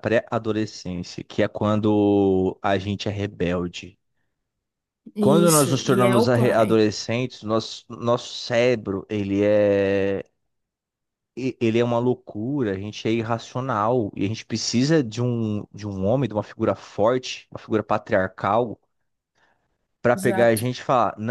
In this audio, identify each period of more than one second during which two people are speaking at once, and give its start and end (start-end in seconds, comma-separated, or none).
5.2-6.8